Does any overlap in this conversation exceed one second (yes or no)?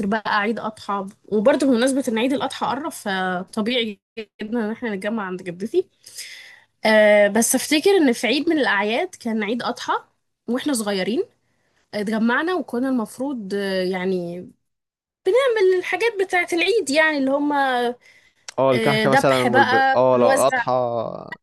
yes